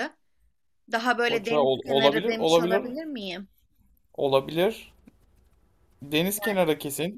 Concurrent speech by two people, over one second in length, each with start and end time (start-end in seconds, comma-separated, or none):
1.2-2.9